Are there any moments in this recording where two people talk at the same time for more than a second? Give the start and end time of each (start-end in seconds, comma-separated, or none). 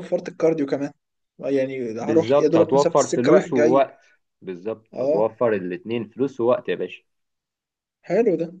2.0-3.9